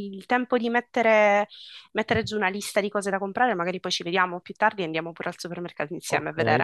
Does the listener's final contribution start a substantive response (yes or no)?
yes